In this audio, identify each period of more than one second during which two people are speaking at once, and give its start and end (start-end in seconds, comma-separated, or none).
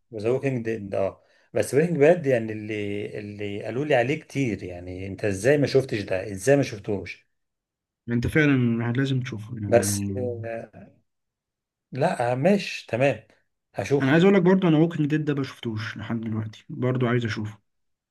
none